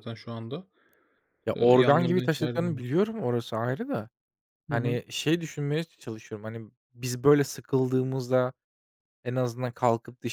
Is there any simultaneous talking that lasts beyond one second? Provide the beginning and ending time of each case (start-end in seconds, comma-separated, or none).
1.5-2.8